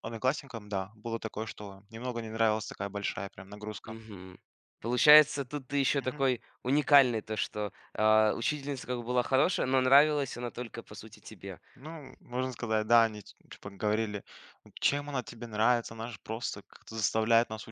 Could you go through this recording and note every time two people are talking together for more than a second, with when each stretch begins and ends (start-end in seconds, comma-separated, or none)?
none